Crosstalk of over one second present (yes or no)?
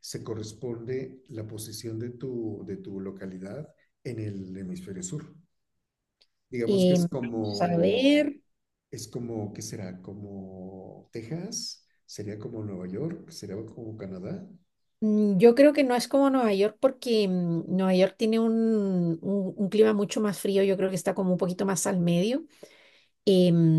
yes